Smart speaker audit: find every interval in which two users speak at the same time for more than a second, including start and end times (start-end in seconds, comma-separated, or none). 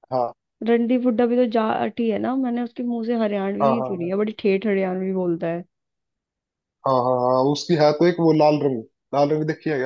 none